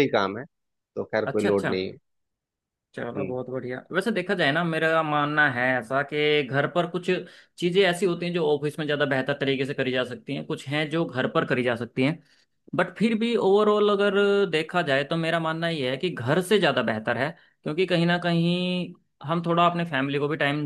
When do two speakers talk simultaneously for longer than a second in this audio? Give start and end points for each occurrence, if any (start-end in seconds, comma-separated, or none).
none